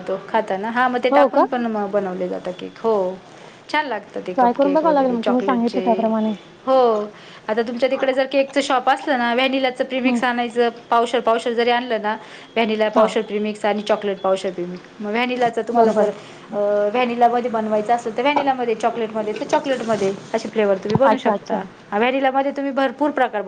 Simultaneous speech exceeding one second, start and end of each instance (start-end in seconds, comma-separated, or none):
4.3-5.8